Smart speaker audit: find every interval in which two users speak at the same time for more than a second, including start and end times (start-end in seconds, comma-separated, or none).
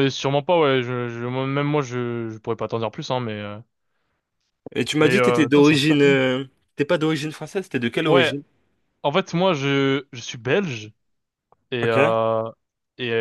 5.0-6.2